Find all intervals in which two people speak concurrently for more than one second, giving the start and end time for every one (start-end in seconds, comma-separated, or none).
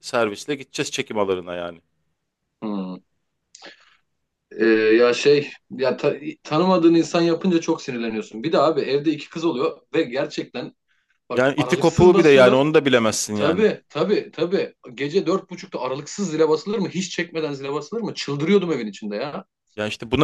11.3-12.6